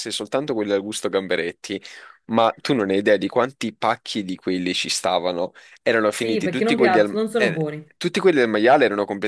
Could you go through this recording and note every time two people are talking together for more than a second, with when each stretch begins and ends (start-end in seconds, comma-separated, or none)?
6.1-7.6